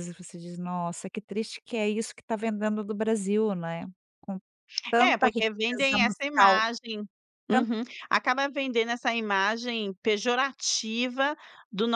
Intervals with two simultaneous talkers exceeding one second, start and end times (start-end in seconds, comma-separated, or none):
5.0-6.7